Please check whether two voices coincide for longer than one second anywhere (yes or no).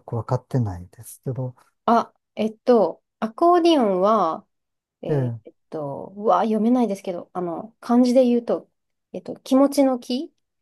no